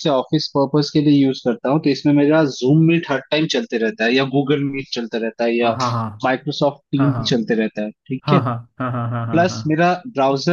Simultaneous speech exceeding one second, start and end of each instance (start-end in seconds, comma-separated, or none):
none